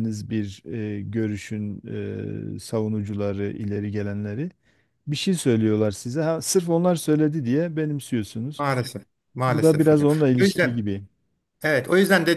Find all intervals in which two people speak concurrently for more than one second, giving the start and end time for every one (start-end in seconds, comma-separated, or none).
9.5-10.9